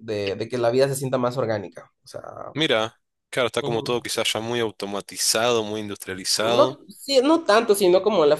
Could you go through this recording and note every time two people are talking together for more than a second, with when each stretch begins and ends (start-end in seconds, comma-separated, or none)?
none